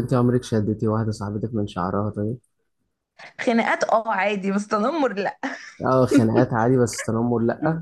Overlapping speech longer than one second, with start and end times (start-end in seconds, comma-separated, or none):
none